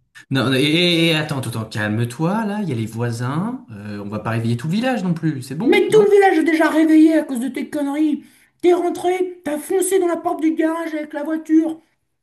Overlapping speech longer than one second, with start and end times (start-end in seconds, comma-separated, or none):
none